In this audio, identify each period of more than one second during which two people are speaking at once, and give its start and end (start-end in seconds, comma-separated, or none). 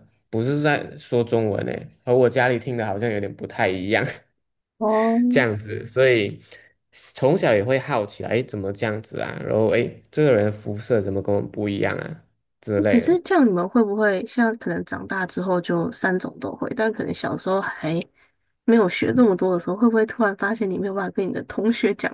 none